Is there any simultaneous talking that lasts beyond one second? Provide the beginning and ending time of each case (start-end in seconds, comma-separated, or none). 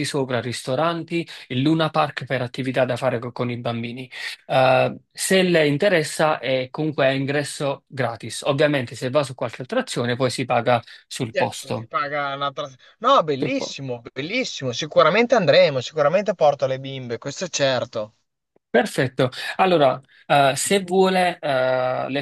none